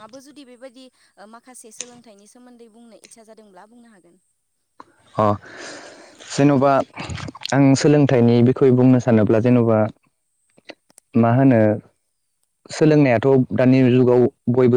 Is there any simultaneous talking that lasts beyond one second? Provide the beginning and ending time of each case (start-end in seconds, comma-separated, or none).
none